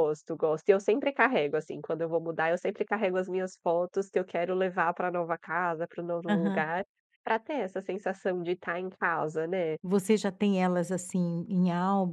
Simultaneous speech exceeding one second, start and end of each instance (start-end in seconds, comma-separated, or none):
none